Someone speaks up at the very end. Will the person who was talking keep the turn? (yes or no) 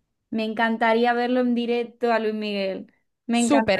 no